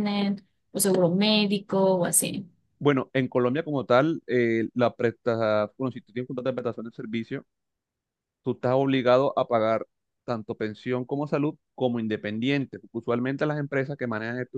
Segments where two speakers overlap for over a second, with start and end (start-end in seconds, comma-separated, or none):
none